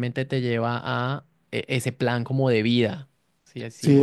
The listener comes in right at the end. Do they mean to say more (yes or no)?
yes